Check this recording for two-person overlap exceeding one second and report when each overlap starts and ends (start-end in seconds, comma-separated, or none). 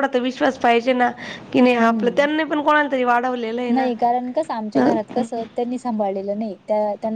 none